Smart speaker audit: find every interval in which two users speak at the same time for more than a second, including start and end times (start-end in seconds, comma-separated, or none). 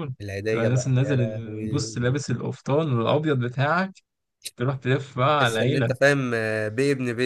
0.5-2.0